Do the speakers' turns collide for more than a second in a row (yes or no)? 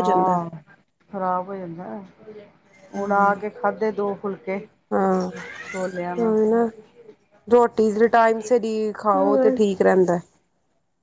no